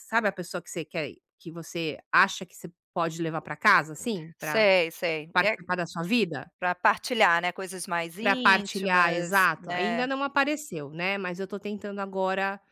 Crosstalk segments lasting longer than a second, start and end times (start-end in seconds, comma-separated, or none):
8.2-10.1